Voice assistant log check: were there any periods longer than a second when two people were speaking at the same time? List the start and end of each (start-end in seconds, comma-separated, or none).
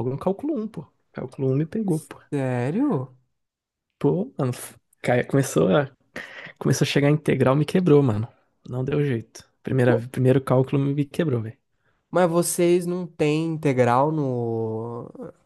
none